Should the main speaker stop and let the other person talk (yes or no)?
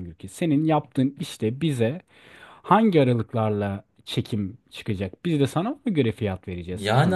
yes